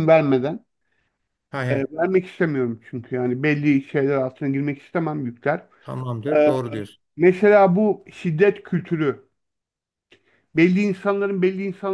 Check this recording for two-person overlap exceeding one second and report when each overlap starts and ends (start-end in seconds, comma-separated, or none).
none